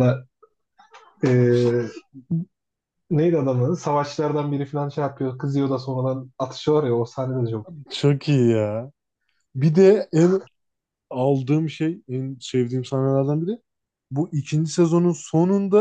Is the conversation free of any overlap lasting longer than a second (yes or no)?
yes